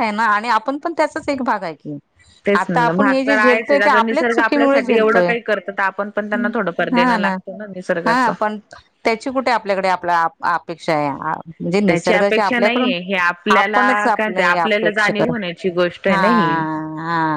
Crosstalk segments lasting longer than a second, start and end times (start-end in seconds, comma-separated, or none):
2.6-5.3, 11.9-15.3